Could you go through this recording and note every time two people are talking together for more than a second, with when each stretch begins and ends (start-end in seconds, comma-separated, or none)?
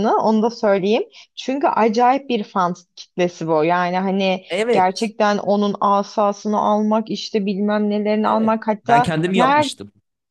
8.2-9.7